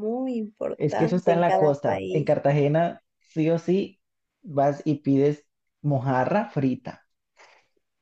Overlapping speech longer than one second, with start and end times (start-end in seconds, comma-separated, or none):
0.8-2.4